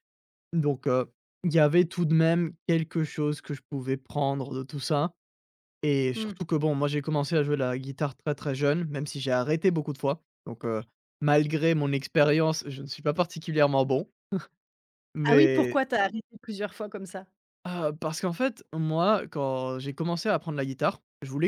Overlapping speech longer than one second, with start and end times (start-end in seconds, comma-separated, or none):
none